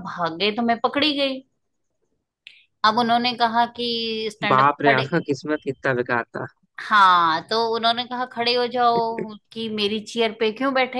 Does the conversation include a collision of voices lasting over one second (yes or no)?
no